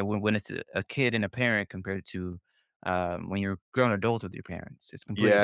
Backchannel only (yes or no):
no